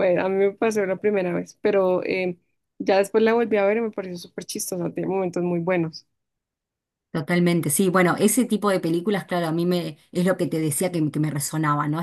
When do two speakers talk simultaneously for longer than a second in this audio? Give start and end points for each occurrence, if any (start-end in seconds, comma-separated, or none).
none